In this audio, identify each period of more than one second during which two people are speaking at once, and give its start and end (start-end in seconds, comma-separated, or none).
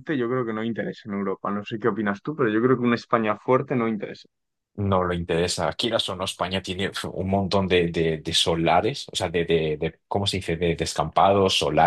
none